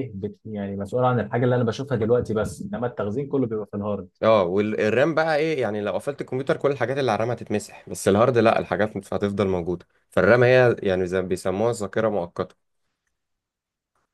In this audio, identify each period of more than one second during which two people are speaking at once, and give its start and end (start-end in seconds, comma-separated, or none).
none